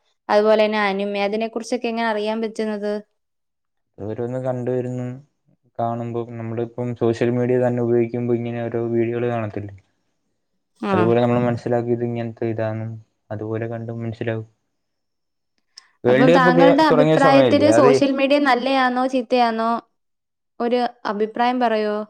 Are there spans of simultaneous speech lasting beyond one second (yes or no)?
yes